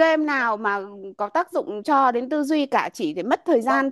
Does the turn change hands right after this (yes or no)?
no